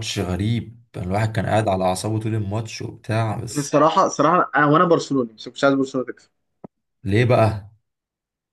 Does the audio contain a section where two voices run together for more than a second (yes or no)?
no